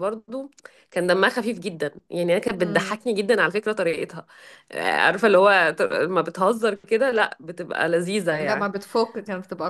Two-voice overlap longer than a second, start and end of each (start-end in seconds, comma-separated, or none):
none